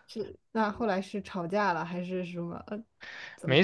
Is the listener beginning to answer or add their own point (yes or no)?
yes